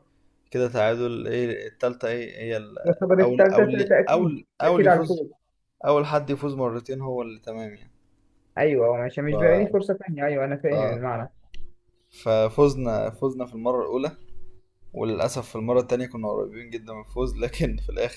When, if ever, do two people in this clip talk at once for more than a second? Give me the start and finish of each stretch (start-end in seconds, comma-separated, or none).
3.2-5.2